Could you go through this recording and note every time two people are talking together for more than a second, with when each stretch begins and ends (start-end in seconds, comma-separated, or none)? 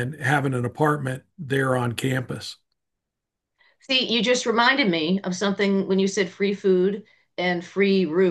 none